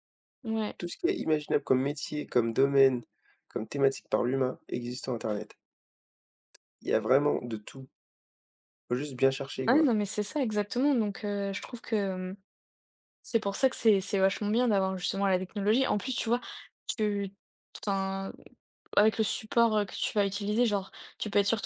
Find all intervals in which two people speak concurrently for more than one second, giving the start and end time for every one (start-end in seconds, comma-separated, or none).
none